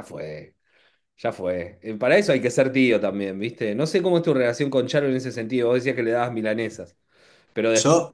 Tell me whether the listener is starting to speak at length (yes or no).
no